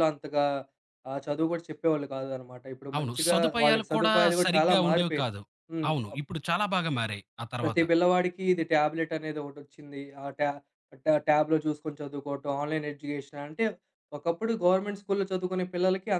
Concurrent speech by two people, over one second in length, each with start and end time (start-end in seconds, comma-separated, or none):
3.0-5.3